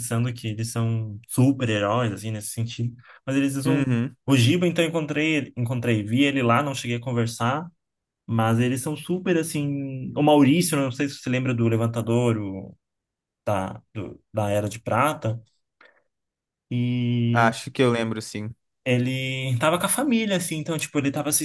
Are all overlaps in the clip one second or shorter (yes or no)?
yes